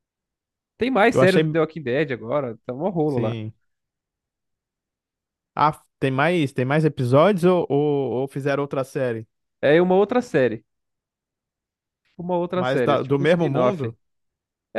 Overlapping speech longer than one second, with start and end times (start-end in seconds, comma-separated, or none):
12.5-13.9